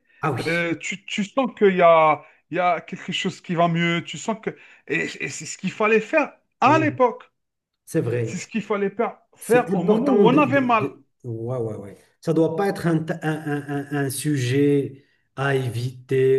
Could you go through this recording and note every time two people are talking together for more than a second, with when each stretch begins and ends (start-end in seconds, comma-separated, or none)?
9.4-10.9